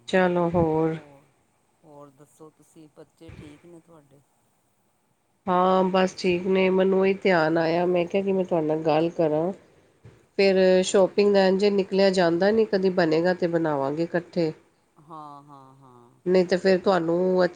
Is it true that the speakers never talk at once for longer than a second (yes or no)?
yes